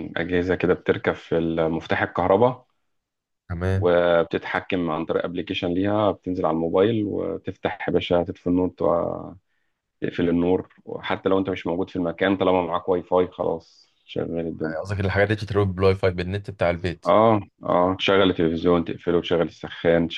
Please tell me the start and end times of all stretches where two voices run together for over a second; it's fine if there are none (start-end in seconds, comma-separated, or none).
none